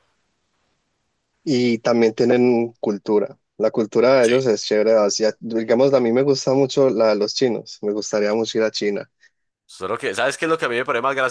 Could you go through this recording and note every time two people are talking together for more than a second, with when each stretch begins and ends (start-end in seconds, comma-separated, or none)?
none